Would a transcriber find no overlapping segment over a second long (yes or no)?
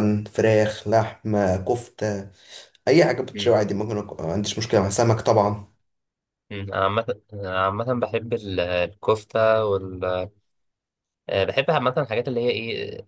yes